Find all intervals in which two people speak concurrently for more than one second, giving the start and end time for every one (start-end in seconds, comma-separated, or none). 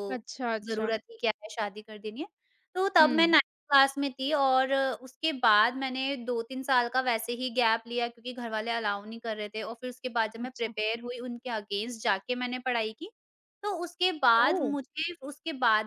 none